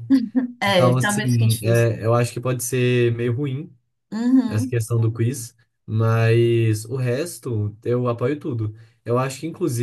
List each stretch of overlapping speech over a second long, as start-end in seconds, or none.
0.7-1.9